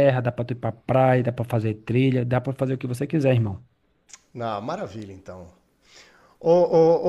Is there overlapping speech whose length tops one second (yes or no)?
no